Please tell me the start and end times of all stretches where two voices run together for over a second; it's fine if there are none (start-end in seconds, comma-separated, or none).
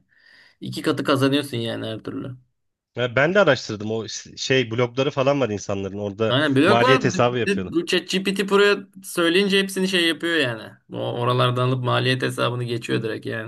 6.3-7.7